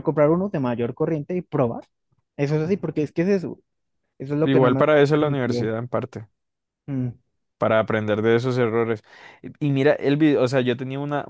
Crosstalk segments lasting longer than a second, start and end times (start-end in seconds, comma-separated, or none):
4.4-5.8